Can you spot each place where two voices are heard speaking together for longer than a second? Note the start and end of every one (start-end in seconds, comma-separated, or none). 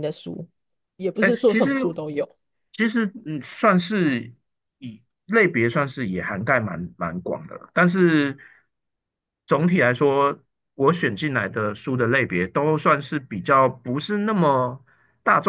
none